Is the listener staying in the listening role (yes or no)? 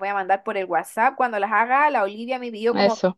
yes